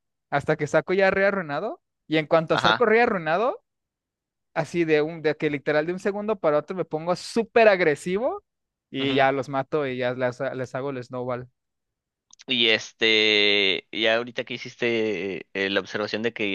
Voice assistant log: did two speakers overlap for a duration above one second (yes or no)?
no